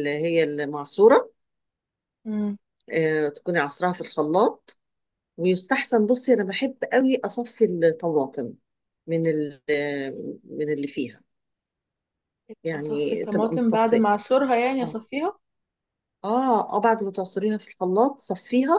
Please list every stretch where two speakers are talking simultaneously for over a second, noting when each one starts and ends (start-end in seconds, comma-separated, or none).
12.7-14.1